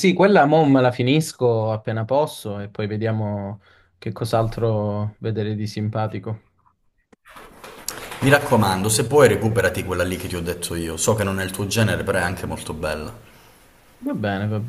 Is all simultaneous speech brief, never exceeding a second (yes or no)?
yes